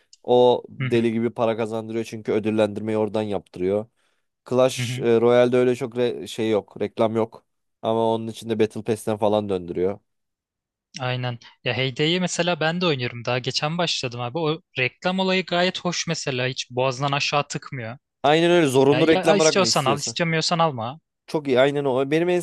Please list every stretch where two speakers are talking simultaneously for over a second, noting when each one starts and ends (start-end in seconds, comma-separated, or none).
18.9-20.1